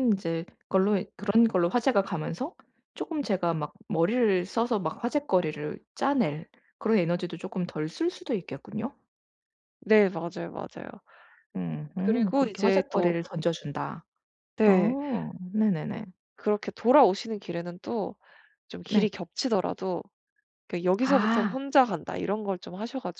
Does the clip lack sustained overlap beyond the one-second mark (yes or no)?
no